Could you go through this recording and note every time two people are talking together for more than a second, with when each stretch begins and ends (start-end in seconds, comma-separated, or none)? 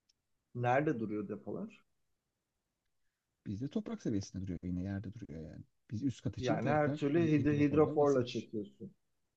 6.4-8.5